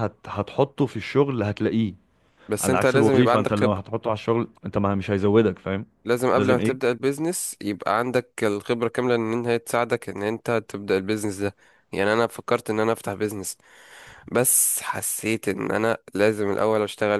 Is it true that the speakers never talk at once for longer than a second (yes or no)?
no